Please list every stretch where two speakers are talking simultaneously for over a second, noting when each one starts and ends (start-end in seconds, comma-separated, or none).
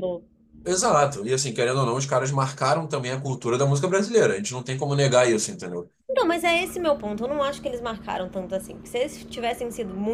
none